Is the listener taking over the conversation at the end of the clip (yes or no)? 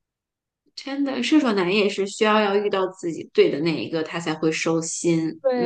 no